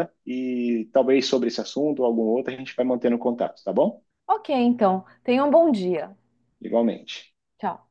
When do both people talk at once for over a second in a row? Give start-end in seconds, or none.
none